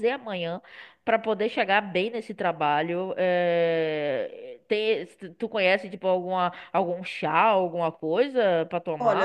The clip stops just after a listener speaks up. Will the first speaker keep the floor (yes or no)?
no